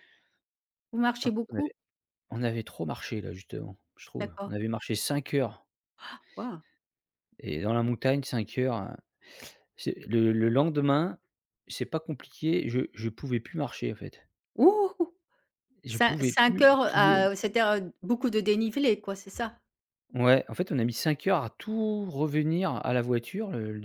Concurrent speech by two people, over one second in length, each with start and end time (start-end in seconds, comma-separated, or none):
15.9-17.3